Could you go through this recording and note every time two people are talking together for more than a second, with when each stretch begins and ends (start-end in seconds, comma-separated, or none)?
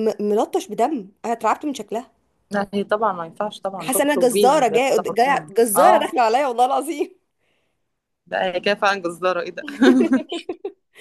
3.8-6.0